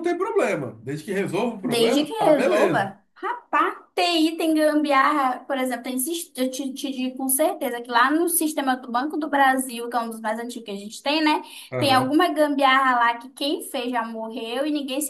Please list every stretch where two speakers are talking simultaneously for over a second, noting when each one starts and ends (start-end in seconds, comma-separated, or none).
1.6-2.9